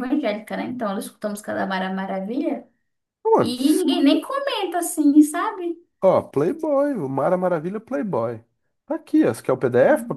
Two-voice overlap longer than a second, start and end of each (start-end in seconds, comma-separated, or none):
none